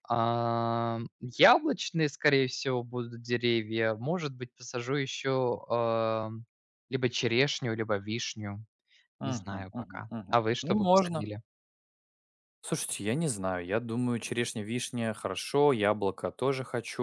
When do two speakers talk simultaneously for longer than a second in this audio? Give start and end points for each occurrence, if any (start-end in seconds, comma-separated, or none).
9.2-11.3